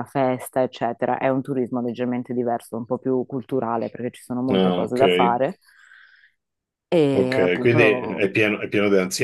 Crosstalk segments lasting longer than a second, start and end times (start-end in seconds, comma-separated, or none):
7.1-8.4